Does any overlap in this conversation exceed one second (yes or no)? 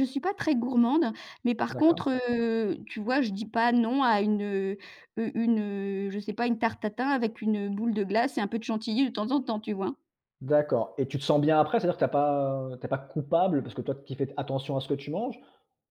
no